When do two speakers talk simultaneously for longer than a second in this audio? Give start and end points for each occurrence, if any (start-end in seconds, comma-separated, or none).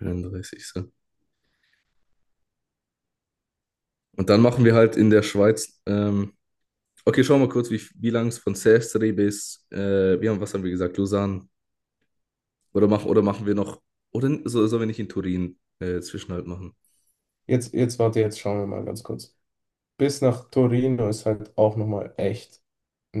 none